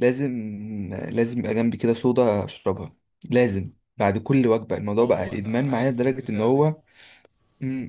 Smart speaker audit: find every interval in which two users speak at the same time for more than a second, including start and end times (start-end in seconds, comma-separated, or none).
5.0-6.7